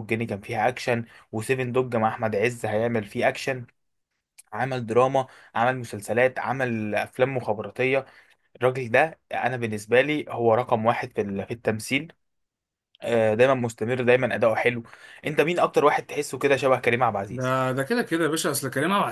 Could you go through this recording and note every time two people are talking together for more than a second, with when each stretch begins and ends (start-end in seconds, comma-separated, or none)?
none